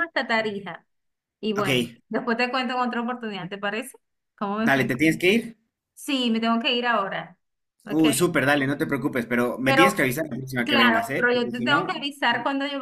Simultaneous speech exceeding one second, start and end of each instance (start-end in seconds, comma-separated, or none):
10.6-11.9